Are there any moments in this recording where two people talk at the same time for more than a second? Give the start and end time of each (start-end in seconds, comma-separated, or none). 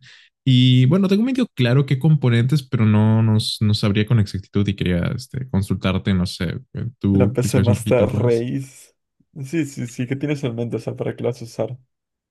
7.1-8.5